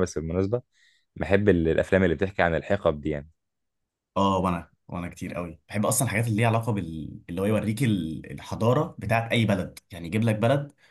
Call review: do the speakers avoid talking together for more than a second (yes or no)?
yes